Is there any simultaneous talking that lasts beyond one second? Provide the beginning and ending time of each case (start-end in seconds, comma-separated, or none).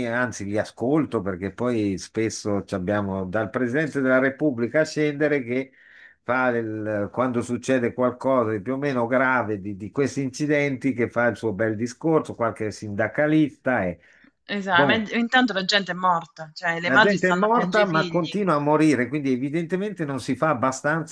16.9-18.4